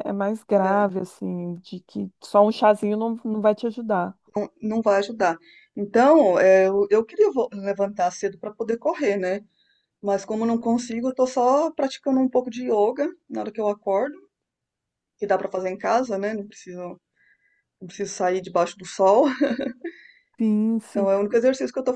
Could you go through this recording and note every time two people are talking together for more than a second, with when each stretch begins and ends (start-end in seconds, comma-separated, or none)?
none